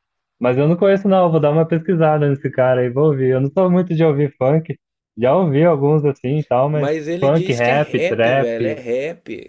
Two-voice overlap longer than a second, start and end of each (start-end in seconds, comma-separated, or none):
6.7-8.8